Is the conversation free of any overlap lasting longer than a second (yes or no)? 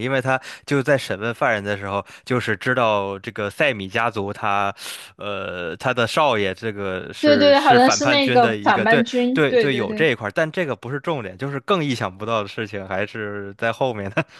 no